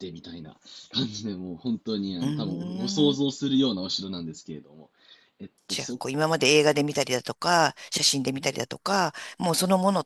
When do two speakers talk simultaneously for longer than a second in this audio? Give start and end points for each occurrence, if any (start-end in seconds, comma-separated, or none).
none